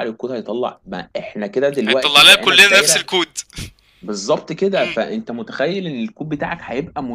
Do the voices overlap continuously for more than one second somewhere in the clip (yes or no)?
yes